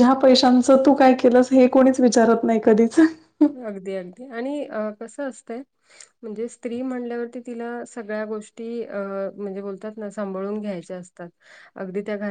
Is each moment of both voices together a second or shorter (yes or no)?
yes